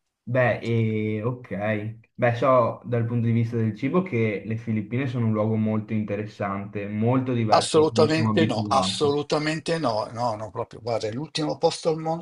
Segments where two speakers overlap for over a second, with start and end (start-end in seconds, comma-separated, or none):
7.5-9.2